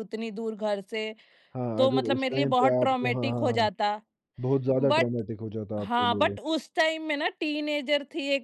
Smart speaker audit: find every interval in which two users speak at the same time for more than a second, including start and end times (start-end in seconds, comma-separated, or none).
1.8-3.7